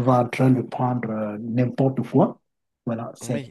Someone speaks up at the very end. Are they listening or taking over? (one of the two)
taking over